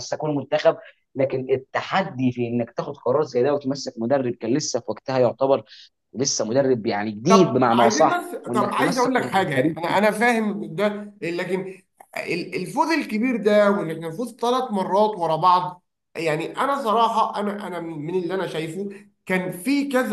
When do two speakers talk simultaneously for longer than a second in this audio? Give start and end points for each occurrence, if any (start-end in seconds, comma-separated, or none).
7.3-9.8